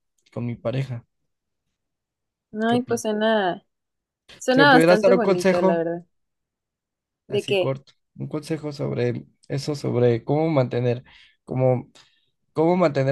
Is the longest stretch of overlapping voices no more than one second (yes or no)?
no